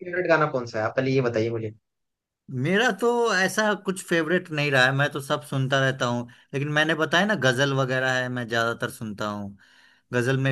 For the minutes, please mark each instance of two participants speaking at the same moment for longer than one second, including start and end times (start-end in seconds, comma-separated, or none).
none